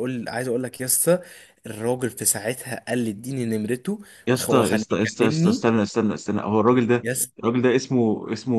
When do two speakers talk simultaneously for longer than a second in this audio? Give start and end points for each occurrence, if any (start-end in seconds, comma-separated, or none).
4.3-5.8